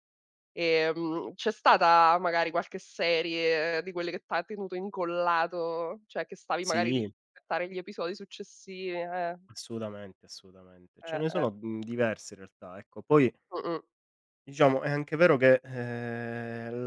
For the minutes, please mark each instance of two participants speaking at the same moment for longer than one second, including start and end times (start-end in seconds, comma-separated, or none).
none